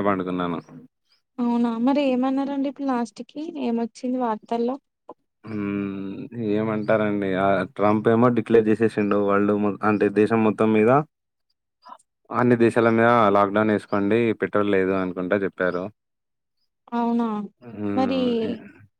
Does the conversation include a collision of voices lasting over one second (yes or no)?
no